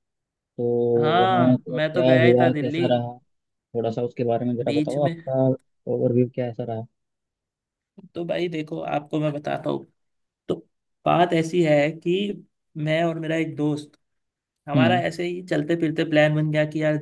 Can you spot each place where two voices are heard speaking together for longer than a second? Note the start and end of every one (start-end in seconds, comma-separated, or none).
1.2-2.9